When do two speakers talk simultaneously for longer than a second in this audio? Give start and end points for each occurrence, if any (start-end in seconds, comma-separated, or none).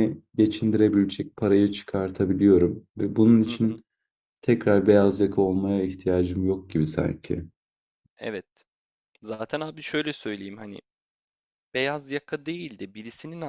none